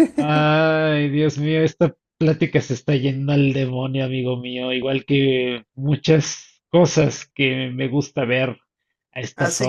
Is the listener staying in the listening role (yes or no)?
no